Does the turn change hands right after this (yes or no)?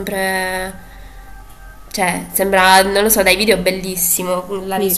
yes